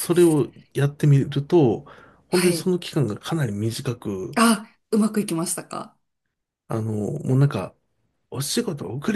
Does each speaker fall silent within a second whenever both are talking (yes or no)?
yes